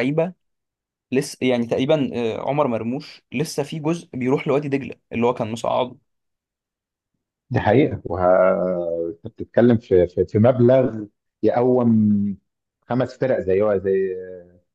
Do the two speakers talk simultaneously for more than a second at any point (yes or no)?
no